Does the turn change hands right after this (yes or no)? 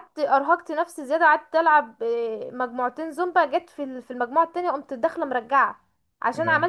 no